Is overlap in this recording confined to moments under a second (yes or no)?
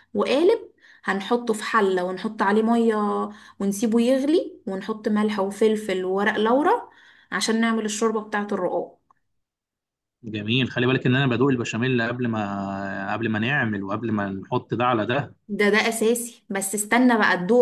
yes